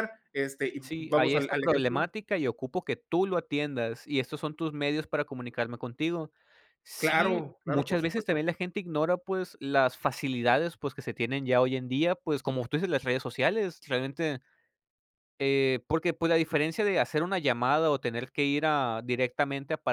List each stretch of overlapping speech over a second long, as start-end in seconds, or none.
0.8-2.1, 7.0-8.4